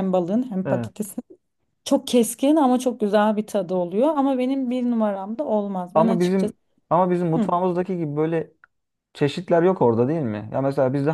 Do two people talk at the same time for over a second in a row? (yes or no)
no